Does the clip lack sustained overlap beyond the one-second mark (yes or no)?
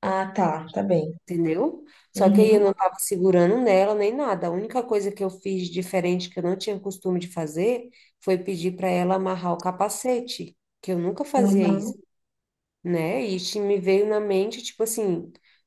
yes